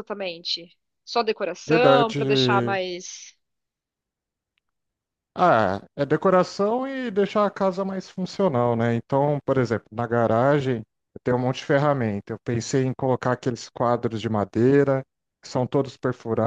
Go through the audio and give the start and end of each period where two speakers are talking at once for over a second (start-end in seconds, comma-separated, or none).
none